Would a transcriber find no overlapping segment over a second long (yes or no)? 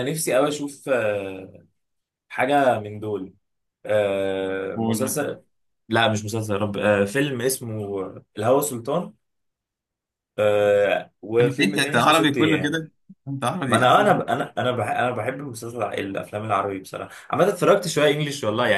no